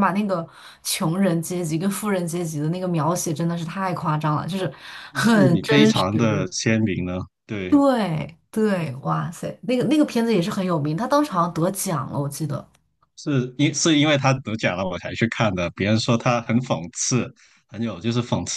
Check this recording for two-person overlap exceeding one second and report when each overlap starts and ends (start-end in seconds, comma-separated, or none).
5.1-6.5